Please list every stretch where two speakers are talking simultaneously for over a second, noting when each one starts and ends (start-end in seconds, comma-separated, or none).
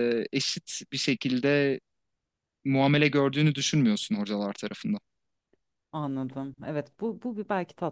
none